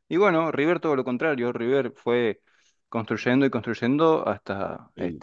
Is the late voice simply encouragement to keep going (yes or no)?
no